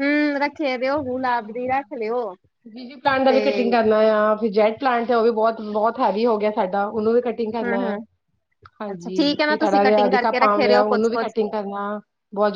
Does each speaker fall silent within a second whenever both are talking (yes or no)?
no